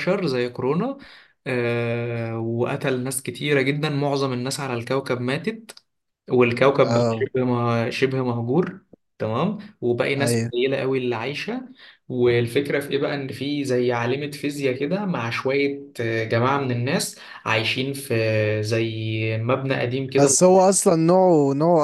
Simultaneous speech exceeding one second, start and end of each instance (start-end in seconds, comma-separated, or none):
none